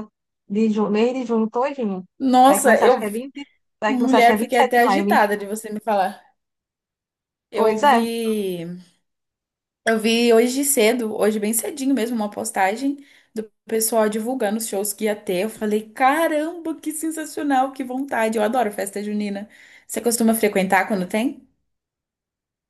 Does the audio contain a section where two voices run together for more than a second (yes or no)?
yes